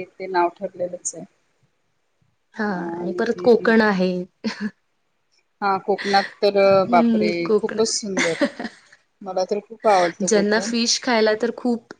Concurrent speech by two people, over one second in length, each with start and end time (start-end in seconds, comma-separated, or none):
none